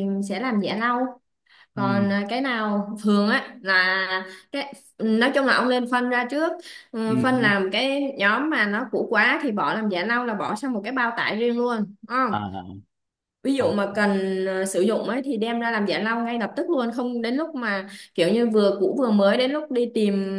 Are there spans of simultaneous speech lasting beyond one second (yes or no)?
no